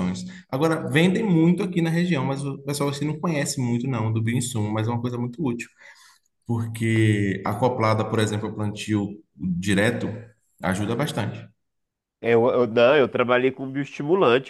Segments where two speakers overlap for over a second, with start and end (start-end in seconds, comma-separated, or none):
none